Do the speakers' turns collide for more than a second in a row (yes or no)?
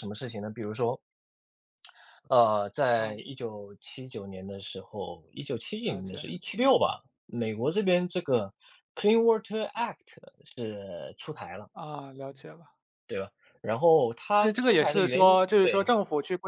yes